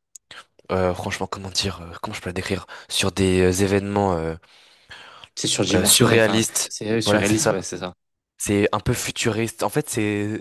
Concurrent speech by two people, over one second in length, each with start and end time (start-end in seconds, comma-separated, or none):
5.7-7.5